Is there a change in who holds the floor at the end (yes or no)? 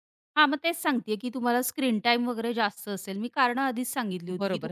yes